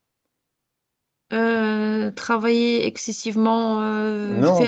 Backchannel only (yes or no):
yes